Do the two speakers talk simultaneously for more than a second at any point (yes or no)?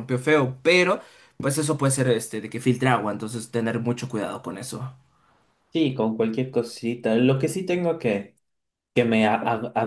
no